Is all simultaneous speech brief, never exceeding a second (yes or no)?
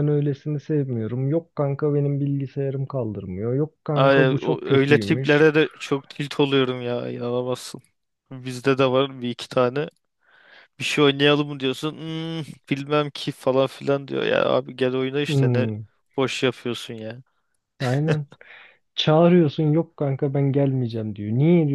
no